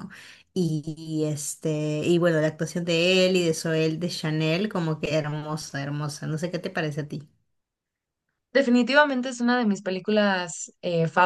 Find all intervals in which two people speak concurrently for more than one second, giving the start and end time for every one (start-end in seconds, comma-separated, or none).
none